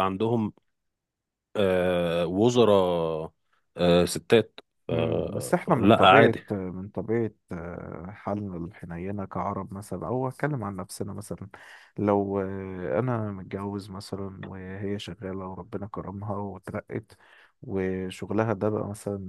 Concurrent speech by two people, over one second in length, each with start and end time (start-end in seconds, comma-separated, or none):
4.9-6.4